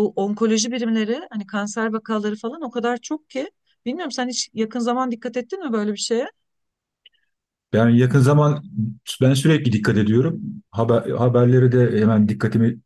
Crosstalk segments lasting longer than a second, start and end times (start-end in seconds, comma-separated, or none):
none